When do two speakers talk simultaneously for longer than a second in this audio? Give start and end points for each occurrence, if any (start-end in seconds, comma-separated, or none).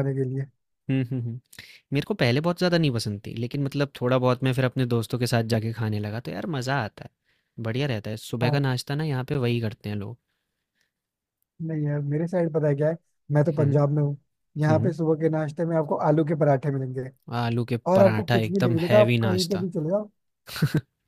17.9-19.7